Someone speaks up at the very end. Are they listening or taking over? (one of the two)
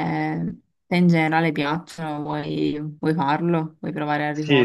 taking over